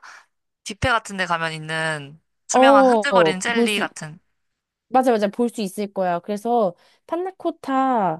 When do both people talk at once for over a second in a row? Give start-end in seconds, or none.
2.5-3.9